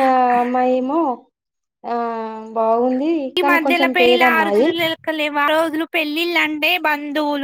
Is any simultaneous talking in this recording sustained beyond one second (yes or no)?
no